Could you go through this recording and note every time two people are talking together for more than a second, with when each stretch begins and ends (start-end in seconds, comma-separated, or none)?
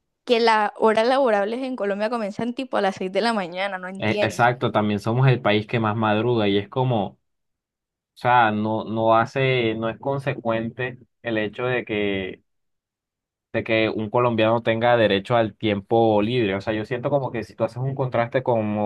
none